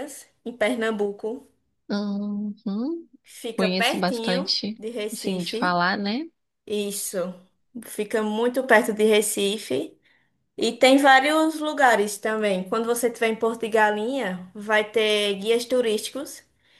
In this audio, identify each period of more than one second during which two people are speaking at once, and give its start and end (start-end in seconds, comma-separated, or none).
3.5-5.8